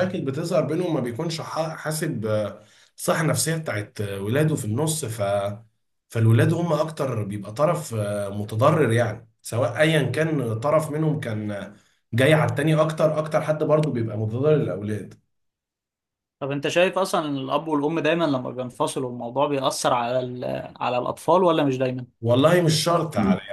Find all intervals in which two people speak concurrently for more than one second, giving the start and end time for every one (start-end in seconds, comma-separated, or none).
none